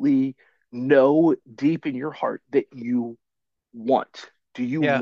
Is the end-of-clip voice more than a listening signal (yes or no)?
yes